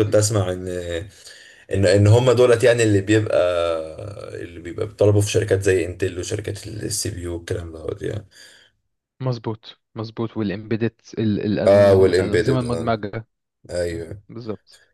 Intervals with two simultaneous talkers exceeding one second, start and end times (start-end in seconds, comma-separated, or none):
11.7-12.9